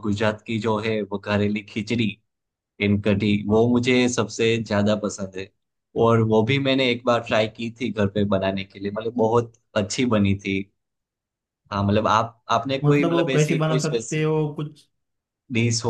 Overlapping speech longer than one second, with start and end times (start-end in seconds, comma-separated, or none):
12.8-14.3